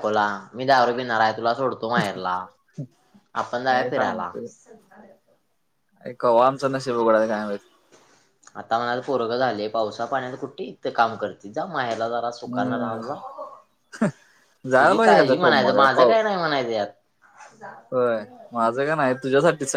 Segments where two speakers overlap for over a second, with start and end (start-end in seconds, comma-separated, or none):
14.8-16.1